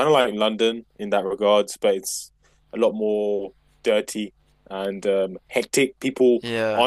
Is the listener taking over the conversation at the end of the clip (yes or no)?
no